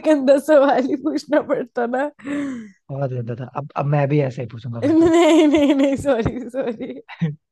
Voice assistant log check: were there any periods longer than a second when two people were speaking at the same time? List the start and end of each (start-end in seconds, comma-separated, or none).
none